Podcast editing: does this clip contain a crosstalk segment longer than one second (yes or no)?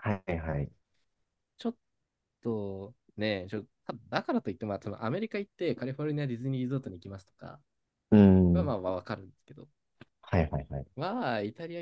no